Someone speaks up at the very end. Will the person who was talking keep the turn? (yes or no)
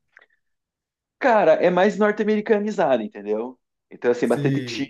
yes